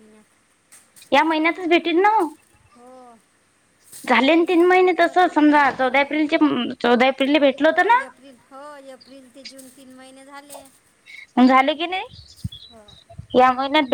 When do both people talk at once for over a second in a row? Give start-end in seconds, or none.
4.2-6.3